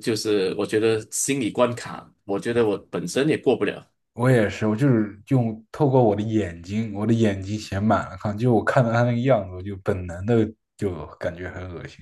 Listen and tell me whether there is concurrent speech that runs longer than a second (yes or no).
no